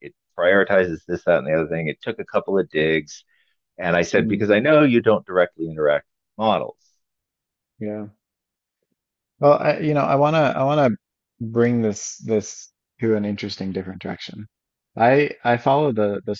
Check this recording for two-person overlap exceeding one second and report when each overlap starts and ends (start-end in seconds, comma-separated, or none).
none